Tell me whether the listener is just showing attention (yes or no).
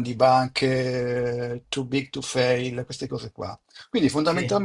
yes